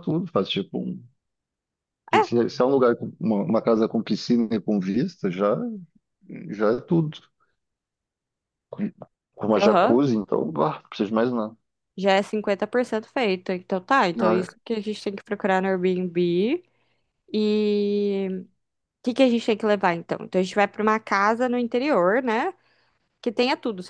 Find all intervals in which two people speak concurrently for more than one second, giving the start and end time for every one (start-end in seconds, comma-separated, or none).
none